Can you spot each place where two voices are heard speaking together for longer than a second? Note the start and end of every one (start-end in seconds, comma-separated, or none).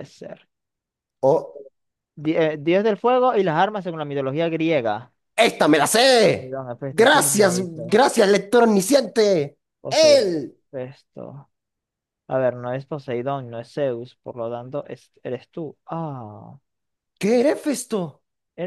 6.2-7.9